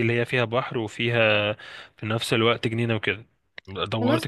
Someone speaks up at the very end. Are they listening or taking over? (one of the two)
taking over